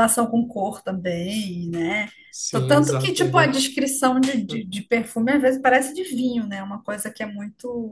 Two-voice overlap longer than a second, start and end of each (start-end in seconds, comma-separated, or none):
2.5-3.7